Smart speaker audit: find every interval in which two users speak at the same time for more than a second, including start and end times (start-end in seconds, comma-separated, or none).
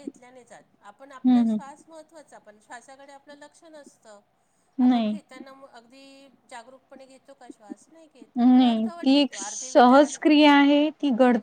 8.4-10.2